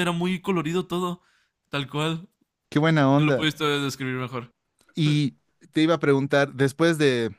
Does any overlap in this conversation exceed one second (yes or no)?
no